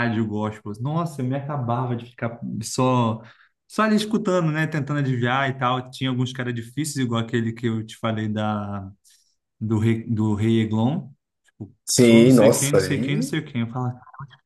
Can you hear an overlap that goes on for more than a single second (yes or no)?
yes